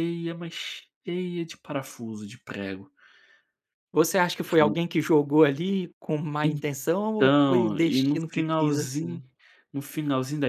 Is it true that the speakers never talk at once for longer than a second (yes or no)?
no